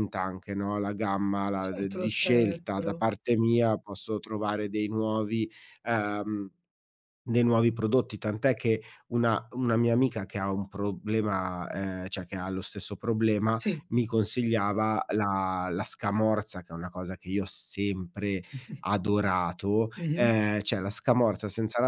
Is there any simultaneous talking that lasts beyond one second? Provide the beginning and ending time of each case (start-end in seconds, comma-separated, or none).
1.6-3.0